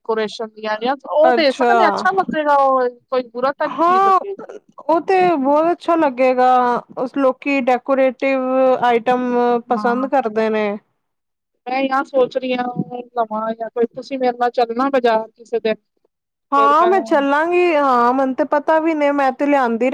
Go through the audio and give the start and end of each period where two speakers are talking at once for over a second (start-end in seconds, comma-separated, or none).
none